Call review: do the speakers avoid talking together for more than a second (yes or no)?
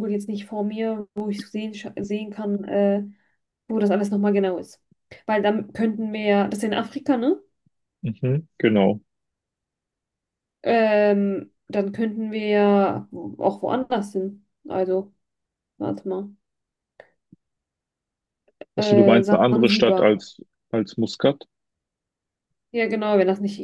no